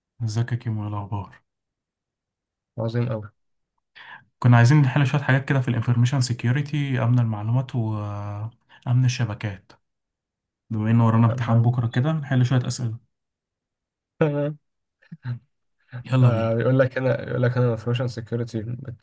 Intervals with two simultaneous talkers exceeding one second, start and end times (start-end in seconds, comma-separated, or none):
none